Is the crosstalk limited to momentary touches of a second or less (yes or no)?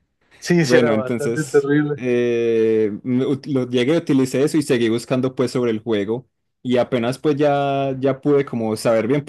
no